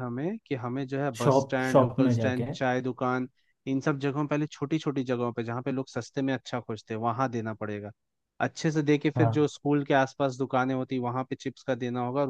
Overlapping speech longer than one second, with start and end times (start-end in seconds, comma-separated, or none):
1.2-2.5